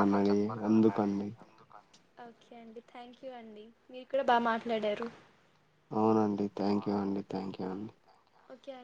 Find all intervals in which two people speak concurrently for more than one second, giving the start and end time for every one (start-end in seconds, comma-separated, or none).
none